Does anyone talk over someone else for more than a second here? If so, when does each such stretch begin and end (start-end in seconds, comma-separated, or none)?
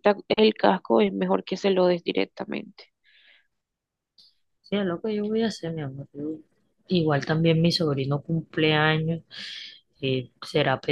none